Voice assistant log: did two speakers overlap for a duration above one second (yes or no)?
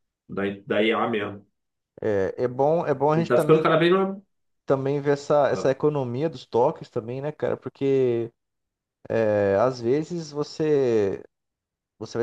no